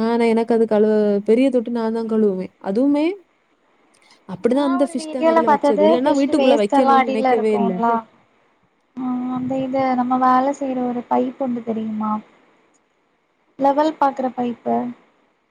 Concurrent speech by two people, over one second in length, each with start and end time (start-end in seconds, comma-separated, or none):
4.9-7.7